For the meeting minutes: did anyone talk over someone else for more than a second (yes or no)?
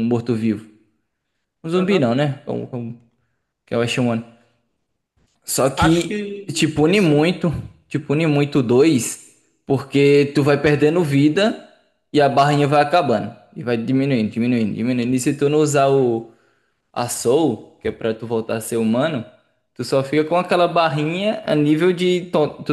yes